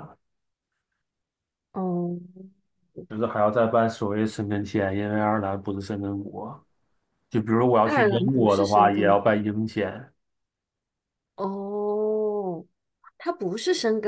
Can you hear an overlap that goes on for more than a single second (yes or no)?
yes